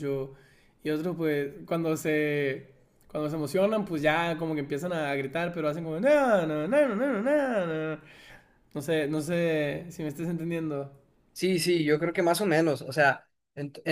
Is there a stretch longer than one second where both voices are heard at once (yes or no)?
no